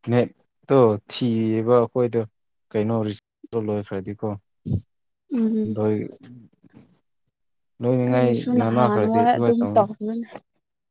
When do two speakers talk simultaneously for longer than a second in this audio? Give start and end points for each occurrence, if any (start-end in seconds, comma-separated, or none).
8.1-9.9